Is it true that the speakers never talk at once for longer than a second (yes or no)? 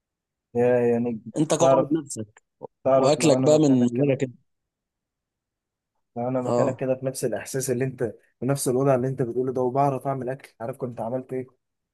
no